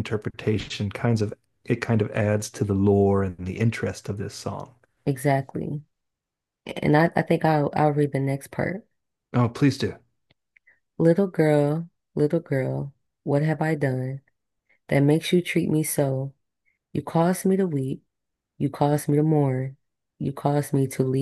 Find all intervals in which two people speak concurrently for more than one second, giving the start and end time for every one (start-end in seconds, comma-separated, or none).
none